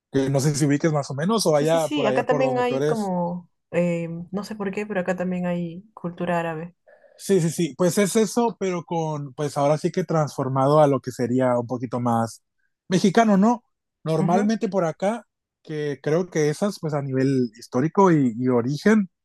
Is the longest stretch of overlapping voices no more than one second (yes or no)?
no